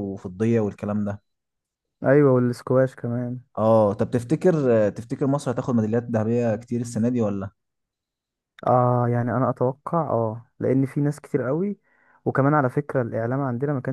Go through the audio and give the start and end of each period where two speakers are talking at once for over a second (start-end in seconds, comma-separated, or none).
none